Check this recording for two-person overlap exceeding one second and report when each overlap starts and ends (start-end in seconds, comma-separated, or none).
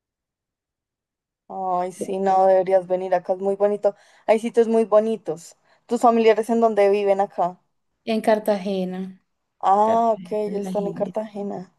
9.8-11.2